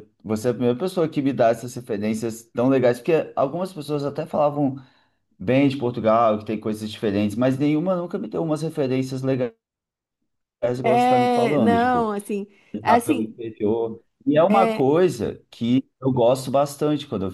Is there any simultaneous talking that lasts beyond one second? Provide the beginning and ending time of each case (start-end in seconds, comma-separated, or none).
10.8-12.1